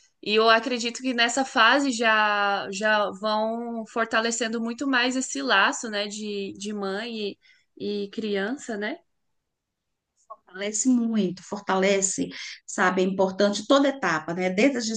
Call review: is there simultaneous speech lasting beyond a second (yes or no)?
no